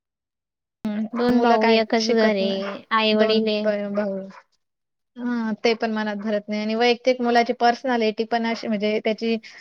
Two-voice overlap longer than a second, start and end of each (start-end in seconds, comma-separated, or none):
1.4-3.6